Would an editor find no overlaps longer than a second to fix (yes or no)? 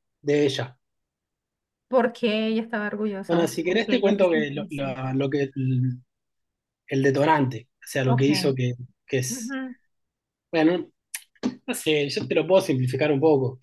no